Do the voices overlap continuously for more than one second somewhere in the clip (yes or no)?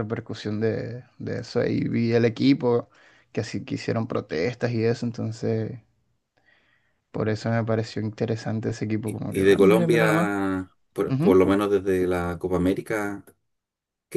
yes